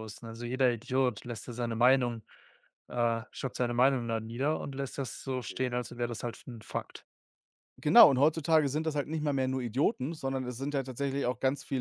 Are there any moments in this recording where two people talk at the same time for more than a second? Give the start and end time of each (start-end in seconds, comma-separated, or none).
none